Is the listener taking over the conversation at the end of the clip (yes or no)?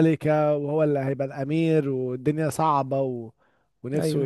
yes